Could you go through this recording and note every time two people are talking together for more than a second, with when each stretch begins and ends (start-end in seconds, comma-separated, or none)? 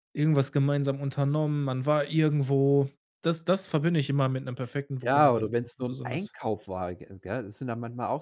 5.0-6.3